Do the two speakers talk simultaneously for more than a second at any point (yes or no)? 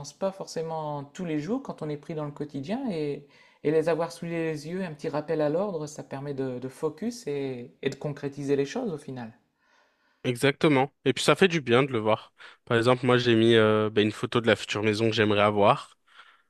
no